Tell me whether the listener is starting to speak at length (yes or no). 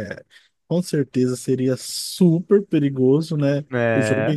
no